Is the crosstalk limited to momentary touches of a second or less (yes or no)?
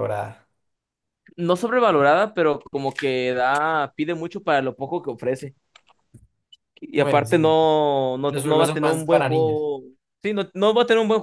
no